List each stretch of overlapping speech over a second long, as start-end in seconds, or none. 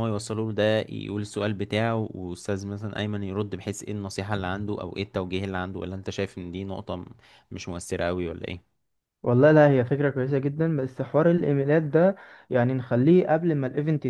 none